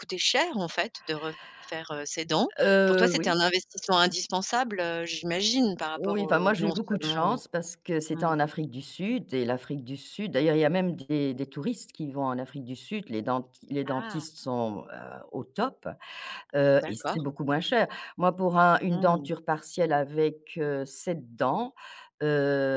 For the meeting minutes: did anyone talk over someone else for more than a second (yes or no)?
yes